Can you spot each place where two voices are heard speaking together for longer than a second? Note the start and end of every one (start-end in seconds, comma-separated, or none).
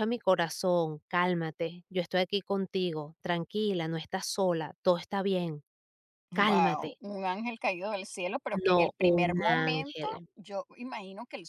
8.6-10.2